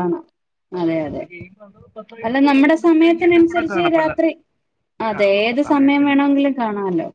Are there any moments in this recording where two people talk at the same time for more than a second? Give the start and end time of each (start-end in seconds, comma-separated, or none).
2.3-4.1